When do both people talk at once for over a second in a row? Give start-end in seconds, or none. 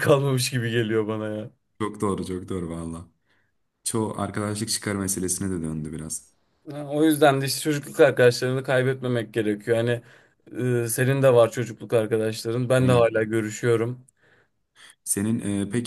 none